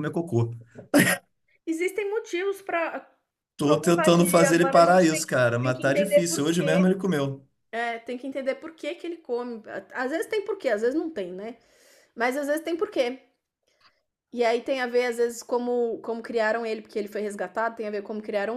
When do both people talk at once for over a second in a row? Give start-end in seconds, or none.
3.6-7.0